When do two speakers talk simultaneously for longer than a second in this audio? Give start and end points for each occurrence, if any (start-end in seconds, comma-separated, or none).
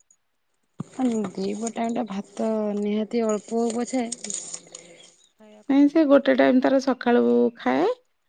none